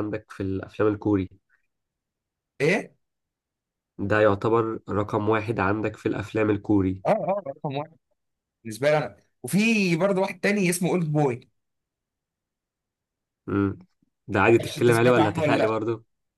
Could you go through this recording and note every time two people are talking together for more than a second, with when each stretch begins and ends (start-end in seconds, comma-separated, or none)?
14.5-15.8